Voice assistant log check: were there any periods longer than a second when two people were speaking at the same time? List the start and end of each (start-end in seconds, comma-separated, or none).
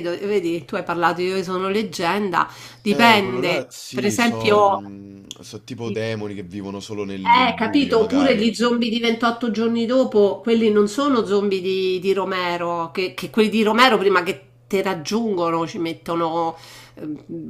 2.9-4.8, 7.2-8.5